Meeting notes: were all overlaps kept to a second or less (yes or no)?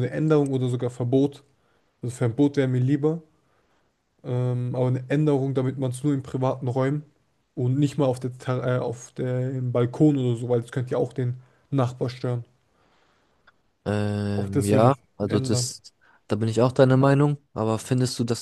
no